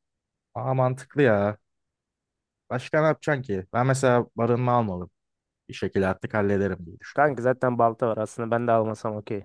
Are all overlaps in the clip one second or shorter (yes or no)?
yes